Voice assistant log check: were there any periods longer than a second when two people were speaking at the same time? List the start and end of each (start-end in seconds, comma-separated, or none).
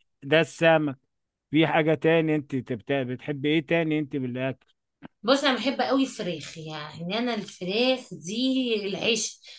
none